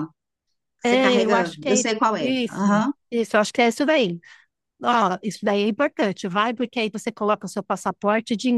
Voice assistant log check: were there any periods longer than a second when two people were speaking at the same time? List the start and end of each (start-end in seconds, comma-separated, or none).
0.8-2.9